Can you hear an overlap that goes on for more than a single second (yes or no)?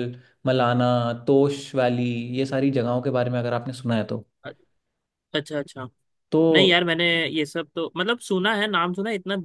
no